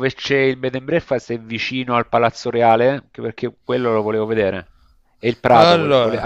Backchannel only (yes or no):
yes